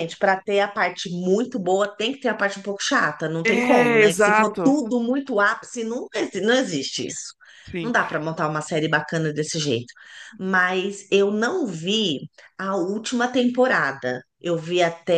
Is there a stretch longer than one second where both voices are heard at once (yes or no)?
yes